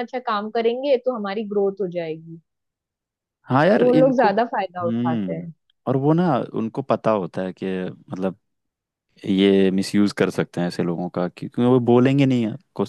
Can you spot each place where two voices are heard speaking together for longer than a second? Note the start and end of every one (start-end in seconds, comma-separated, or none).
3.8-5.5